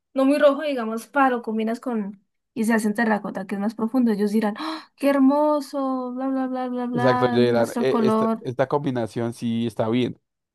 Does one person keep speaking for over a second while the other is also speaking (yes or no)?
yes